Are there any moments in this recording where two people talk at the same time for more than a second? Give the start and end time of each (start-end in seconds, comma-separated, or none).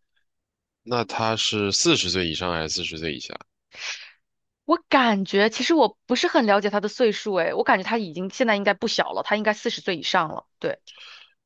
none